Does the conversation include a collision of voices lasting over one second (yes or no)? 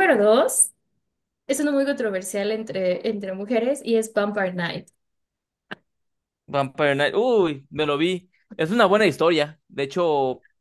no